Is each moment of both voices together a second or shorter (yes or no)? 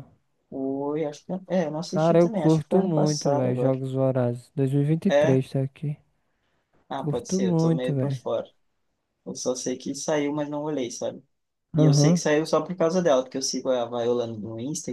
no